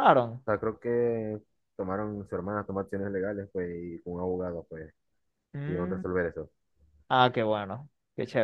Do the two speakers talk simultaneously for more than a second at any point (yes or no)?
no